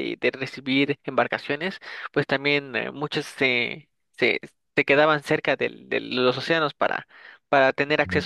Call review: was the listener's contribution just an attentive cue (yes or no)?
yes